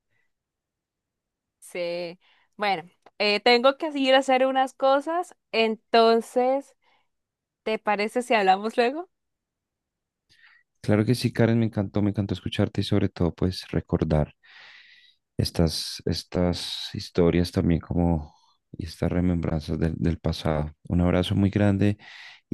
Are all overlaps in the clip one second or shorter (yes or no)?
yes